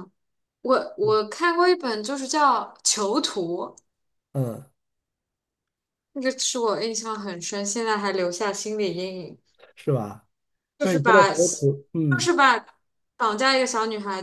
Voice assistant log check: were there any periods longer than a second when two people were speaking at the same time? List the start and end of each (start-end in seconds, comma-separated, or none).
10.8-12.3